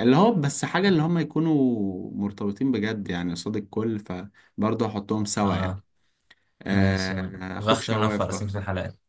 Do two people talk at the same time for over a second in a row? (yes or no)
yes